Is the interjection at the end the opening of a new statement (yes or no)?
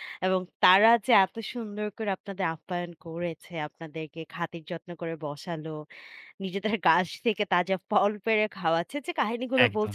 no